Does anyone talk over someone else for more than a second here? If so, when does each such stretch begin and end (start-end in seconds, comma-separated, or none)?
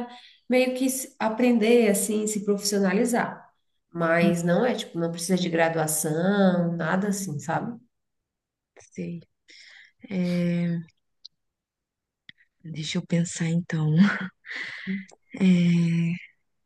none